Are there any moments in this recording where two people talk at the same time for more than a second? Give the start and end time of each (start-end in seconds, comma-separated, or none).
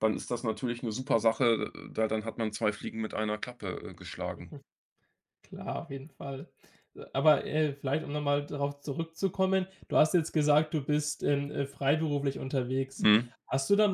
none